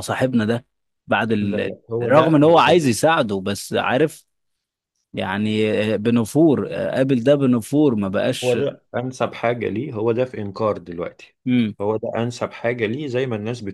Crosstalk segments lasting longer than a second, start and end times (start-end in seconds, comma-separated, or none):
1.4-2.8